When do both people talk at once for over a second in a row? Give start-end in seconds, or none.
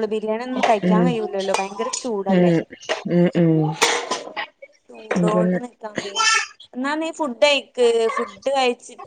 none